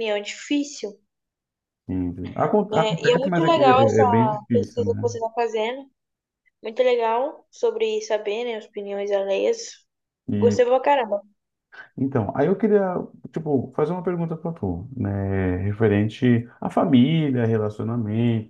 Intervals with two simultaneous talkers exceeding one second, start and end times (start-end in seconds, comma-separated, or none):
2.7-5.1